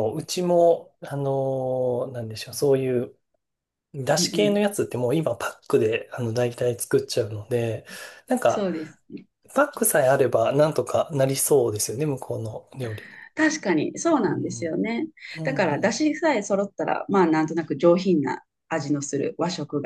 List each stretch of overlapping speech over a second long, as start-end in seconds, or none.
none